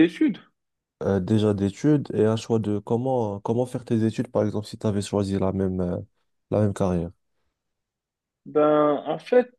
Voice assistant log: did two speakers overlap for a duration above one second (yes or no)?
no